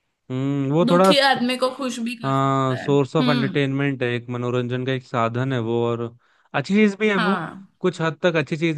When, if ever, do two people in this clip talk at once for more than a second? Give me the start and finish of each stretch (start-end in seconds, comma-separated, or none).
2.2-3.6